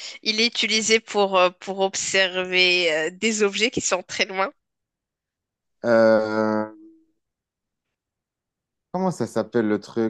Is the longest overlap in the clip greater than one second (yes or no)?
no